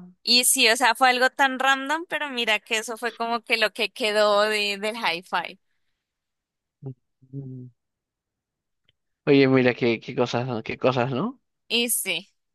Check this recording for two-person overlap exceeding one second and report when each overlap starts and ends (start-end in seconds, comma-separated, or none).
none